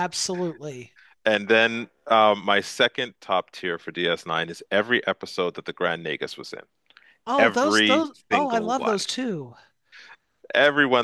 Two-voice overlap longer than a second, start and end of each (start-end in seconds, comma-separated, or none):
7.4-9.0